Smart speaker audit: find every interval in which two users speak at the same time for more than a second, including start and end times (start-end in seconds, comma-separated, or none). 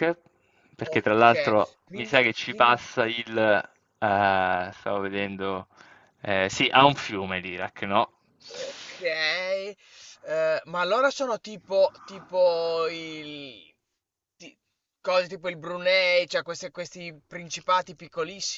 0.8-2.8